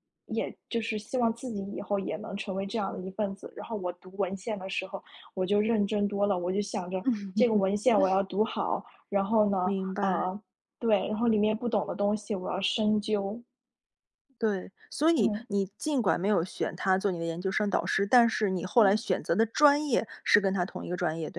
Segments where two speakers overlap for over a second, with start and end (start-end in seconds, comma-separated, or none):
none